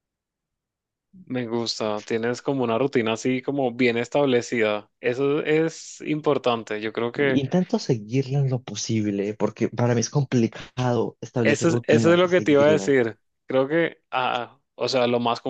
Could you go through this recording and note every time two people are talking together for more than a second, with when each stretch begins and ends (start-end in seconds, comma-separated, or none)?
11.4-12.9